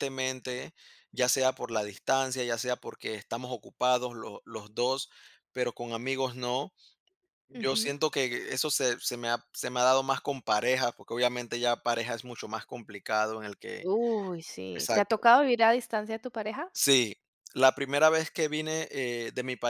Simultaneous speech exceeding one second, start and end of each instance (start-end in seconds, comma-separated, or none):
none